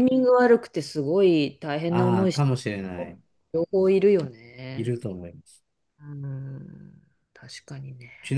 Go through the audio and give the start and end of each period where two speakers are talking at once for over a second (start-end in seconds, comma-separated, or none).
1.9-3.1